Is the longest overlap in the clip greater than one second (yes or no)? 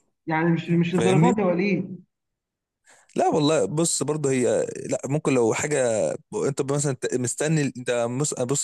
no